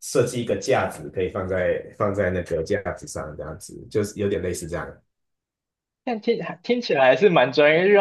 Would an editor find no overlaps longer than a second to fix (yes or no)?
yes